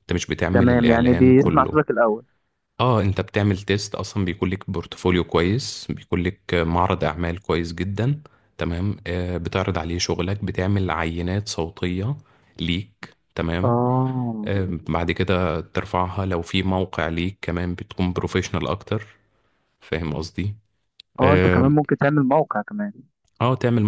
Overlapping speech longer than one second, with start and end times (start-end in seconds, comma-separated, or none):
0.5-1.8